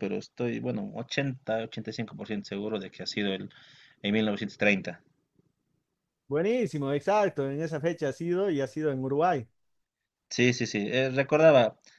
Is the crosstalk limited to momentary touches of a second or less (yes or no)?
yes